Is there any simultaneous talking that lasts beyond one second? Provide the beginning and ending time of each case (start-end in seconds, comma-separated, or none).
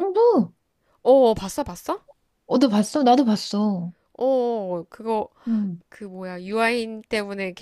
none